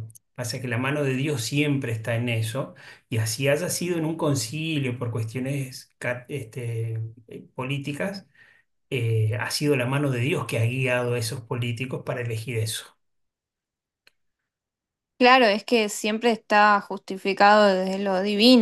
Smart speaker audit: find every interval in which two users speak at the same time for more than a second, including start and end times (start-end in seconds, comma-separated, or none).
none